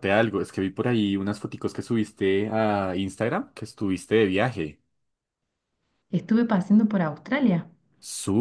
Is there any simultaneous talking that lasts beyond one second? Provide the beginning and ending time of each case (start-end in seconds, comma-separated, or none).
none